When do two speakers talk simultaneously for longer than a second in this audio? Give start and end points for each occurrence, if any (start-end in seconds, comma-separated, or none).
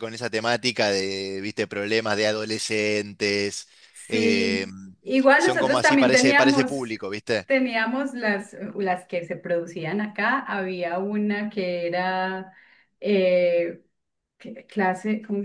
5.4-6.7